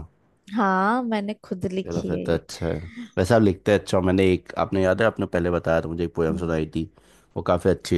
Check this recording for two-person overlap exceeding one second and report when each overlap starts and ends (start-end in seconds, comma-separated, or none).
none